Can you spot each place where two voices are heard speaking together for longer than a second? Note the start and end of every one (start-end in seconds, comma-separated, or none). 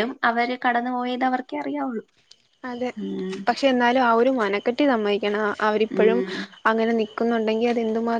none